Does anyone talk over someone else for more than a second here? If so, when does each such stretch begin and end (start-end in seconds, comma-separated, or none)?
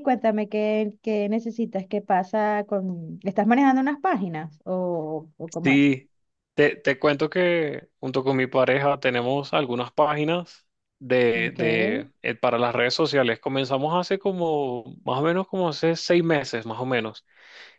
none